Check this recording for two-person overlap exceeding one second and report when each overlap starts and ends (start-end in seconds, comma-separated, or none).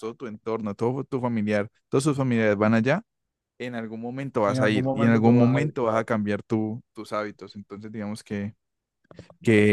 4.5-6.1